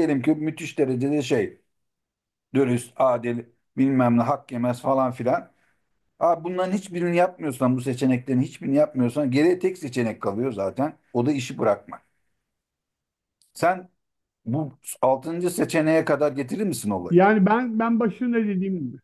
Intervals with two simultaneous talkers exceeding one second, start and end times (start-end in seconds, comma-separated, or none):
none